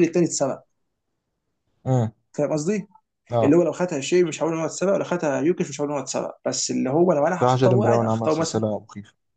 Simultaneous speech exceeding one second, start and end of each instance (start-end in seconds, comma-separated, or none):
7.4-8.6